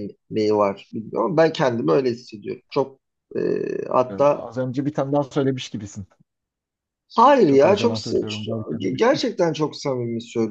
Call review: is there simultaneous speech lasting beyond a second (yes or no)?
yes